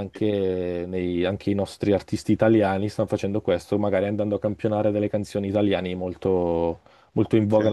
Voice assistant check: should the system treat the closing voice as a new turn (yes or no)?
no